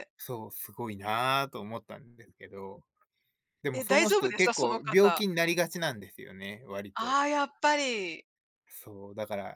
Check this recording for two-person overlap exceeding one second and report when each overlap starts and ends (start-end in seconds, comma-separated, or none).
3.7-5.2